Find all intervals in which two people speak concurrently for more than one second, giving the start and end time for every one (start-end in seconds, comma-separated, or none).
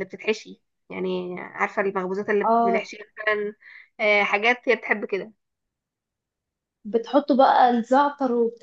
none